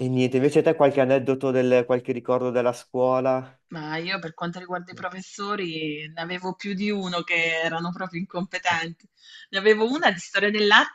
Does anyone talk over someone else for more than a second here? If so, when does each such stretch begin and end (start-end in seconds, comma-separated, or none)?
none